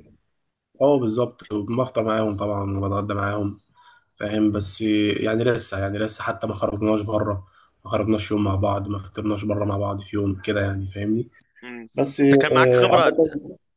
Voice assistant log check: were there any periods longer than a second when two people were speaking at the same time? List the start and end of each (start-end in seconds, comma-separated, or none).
11.9-13.3